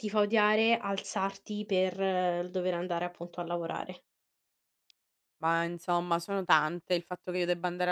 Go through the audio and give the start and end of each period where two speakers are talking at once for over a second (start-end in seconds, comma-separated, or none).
none